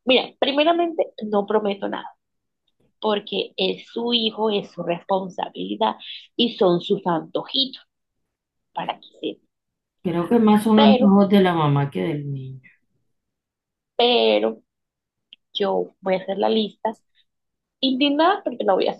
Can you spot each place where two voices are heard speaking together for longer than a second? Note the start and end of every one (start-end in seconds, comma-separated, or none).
none